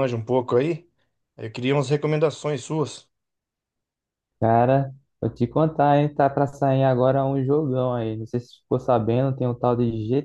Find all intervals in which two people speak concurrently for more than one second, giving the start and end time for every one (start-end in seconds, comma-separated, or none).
none